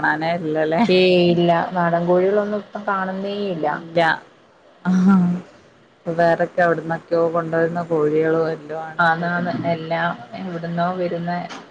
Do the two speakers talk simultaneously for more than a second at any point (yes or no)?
no